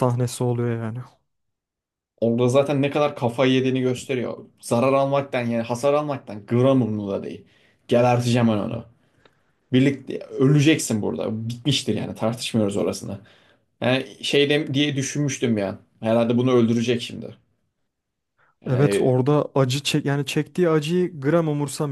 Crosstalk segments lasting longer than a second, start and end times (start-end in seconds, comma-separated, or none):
none